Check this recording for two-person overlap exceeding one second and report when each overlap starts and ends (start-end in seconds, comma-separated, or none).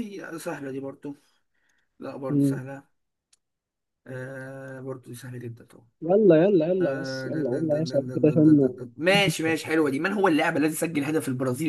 6.8-8.7